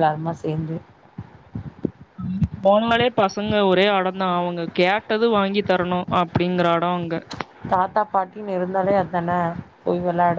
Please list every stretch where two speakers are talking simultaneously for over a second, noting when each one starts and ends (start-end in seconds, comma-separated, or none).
none